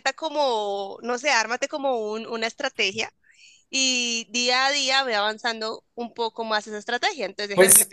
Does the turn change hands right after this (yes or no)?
yes